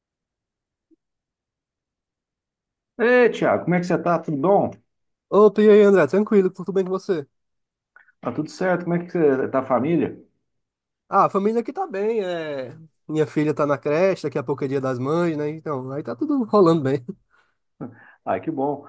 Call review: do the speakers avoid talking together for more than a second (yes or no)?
yes